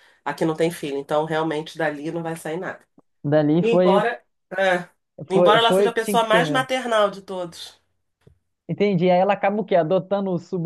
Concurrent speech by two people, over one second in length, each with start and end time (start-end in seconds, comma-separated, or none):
5.3-6.7